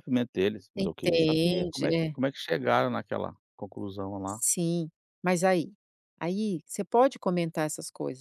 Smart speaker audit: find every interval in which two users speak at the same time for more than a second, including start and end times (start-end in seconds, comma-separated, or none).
0.8-2.2